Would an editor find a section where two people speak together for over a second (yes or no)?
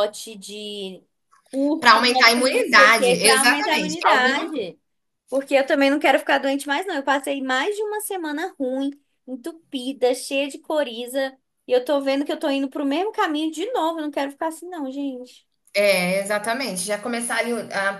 yes